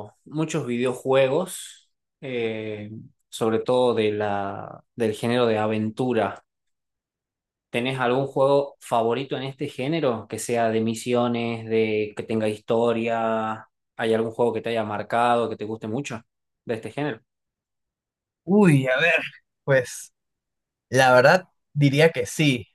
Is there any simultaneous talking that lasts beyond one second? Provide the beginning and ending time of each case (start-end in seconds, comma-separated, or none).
none